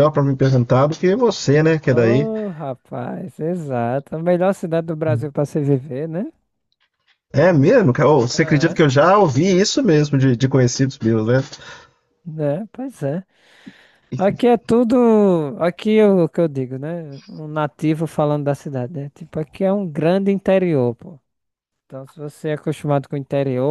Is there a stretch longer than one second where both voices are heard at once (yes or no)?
no